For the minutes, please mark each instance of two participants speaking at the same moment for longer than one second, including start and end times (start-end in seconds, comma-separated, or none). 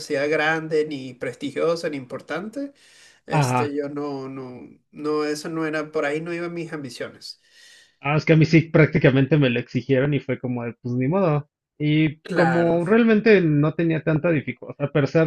none